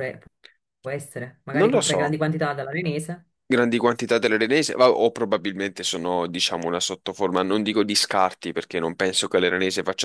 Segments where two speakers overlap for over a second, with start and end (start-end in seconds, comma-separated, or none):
none